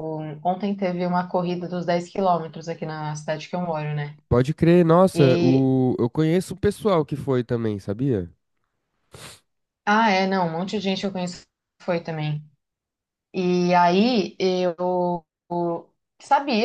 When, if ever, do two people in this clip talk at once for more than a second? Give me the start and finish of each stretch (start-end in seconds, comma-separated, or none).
none